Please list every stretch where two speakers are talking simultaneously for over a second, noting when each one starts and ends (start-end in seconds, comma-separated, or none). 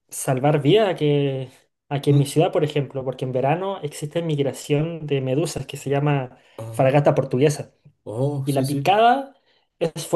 none